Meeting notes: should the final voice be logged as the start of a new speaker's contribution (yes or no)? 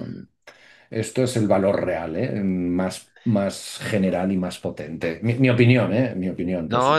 yes